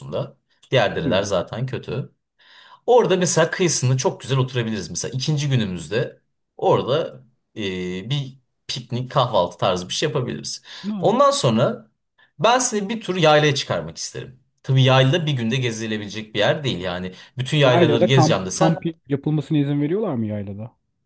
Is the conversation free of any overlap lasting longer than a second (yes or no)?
no